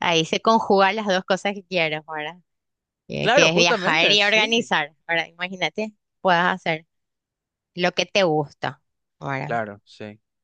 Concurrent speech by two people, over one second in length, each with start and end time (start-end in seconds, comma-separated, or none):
3.2-4.7